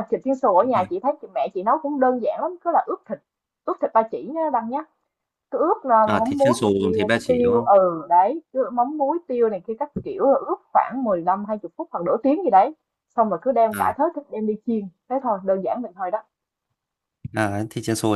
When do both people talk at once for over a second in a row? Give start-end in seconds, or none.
6.1-7.7